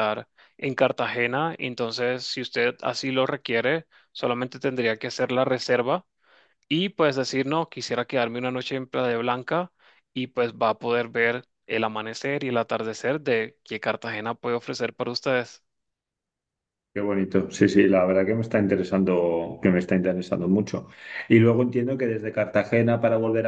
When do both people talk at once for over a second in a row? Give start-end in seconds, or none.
none